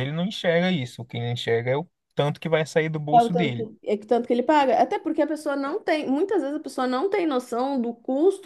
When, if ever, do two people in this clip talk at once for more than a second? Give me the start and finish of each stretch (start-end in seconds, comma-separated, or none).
none